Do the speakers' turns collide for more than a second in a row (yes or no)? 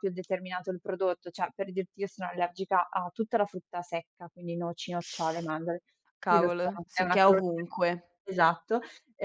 yes